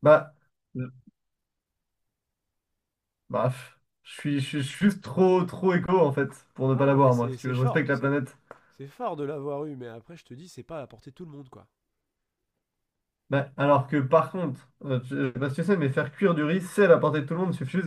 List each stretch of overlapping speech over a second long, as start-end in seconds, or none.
6.7-8.1